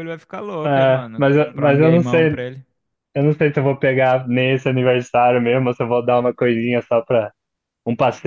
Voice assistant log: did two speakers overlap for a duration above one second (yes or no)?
yes